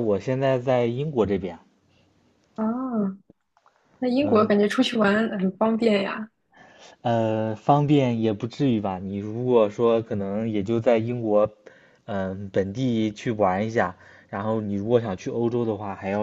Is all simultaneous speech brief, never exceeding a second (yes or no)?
yes